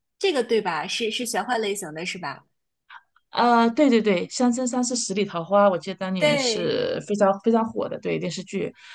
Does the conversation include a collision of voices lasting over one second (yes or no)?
no